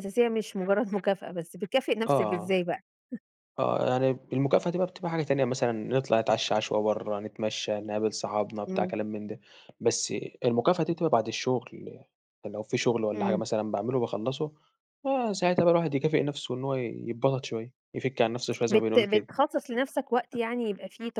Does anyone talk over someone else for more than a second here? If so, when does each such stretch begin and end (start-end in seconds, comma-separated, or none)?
none